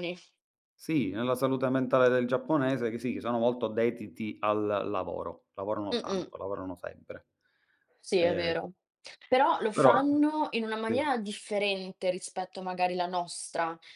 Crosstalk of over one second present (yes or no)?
no